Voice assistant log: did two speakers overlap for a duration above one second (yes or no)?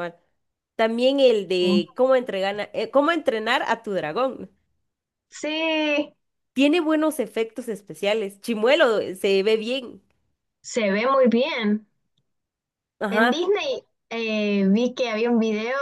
no